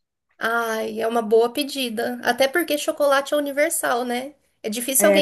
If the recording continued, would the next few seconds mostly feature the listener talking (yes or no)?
no